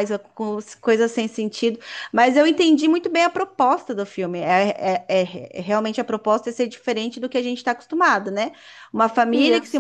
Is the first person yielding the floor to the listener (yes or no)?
no